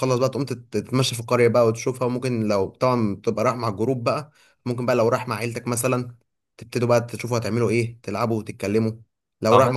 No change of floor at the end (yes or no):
yes